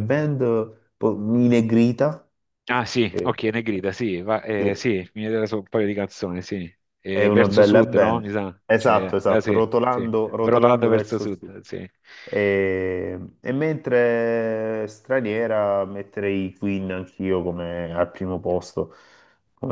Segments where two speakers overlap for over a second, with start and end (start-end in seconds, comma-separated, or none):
7.1-11.5